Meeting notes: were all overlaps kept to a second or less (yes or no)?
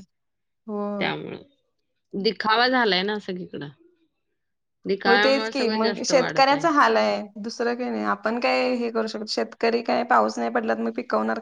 no